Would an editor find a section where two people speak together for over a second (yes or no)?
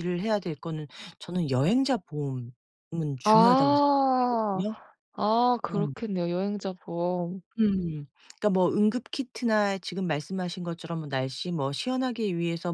yes